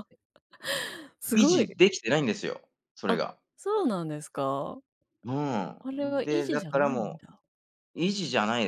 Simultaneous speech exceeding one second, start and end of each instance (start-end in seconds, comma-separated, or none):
5.8-7.2